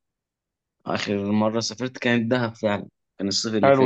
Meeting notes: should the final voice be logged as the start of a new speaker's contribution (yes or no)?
yes